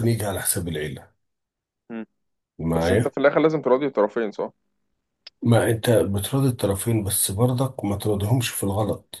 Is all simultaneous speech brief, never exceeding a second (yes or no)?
yes